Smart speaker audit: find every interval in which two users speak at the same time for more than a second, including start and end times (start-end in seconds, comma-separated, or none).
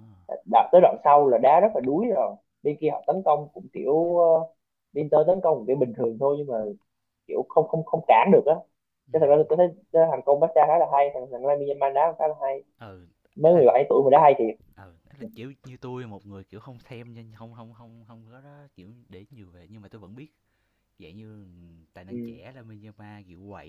none